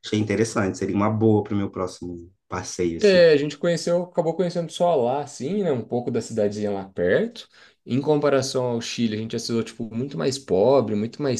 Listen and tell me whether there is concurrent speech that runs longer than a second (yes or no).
no